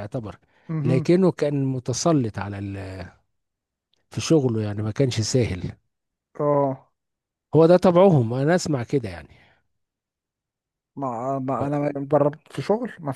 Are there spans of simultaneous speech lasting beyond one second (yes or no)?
no